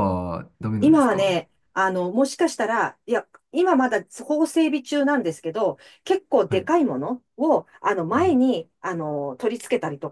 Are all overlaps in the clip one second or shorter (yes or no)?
yes